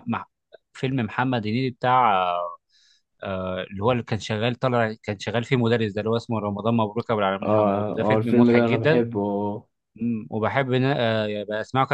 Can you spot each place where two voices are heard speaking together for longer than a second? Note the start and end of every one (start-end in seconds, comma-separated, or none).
7.4-9.0